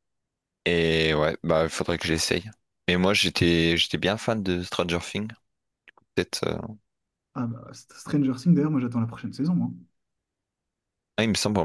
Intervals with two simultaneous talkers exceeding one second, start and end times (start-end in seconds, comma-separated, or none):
none